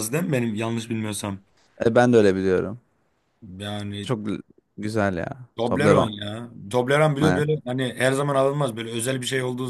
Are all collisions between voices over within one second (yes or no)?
yes